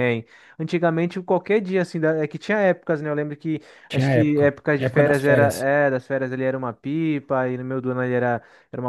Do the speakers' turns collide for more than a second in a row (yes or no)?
yes